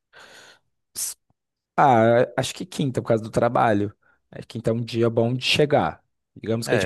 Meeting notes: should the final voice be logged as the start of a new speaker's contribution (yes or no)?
yes